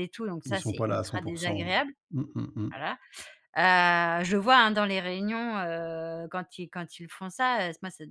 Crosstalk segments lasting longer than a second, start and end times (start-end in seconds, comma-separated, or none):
0.5-1.7